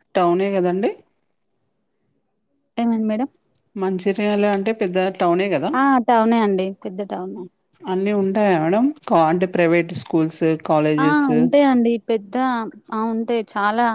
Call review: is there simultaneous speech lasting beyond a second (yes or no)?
no